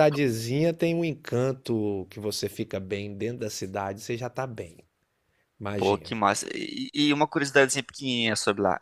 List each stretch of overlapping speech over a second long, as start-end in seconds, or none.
none